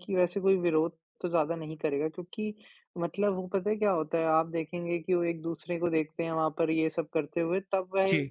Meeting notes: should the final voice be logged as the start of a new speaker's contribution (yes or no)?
no